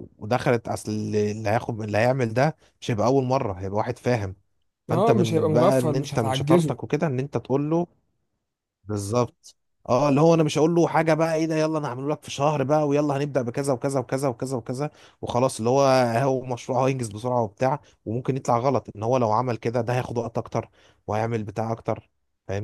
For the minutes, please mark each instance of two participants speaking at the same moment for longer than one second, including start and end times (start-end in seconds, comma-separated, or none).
4.9-6.8